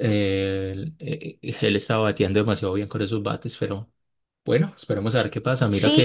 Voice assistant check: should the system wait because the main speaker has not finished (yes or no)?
no